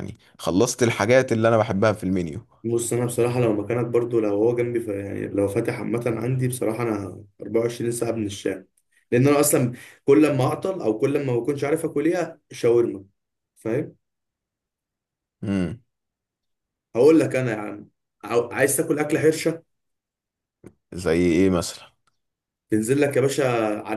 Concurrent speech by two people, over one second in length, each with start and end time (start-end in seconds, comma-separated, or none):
none